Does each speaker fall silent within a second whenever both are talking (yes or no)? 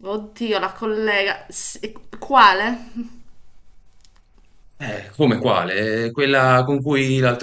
yes